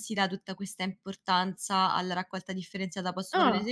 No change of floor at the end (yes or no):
yes